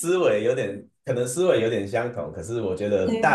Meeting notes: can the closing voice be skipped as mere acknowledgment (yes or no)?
yes